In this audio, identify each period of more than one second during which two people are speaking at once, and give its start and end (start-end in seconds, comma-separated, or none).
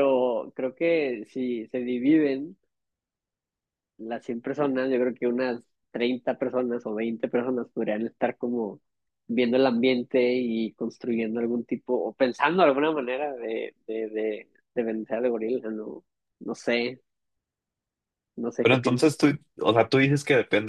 none